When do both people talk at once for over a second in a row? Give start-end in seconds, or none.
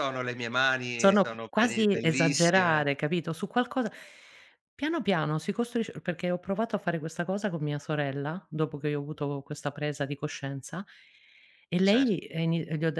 0.9-2.9